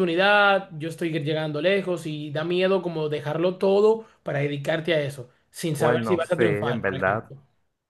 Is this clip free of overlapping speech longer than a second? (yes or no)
no